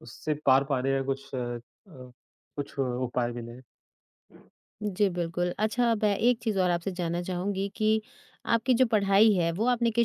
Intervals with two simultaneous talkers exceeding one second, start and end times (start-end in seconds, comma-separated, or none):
none